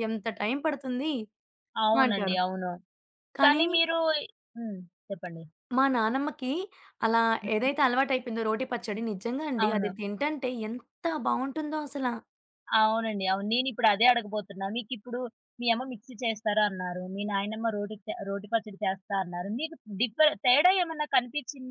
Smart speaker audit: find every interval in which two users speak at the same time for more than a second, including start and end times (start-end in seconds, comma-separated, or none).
none